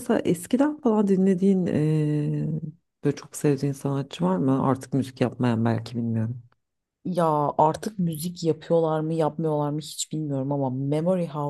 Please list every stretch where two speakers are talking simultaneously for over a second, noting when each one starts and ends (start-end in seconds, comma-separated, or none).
none